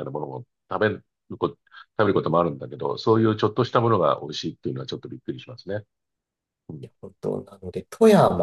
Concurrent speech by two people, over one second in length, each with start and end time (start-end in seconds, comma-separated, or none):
none